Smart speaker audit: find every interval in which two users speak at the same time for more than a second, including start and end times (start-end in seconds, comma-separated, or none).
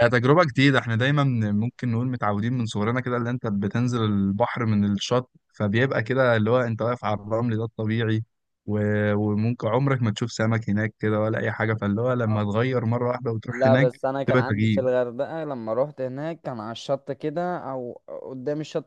13.5-14.8